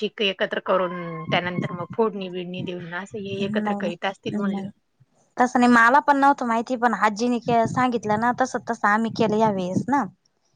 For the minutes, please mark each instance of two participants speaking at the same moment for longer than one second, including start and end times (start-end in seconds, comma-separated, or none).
3.5-4.7